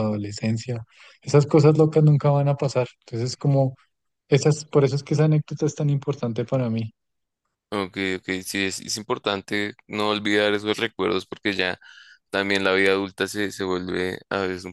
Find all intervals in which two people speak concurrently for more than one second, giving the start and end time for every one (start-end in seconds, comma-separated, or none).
none